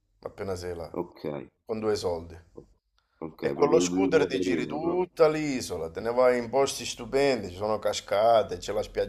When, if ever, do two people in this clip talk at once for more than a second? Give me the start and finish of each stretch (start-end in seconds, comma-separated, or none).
3.4-5.0